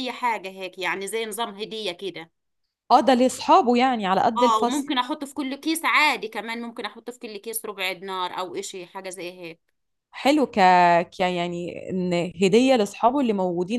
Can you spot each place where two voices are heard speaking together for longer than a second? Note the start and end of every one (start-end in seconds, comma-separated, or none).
none